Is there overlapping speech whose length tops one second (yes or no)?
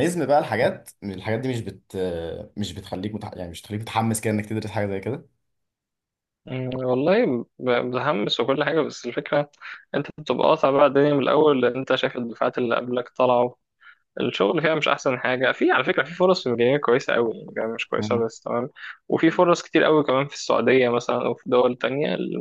no